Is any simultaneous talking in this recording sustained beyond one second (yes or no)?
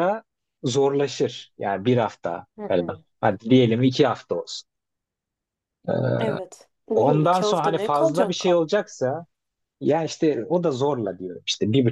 yes